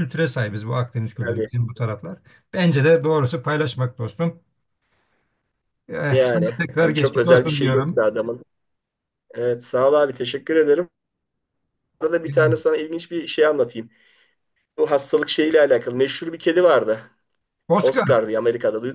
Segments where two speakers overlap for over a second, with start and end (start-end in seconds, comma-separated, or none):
6.1-8.0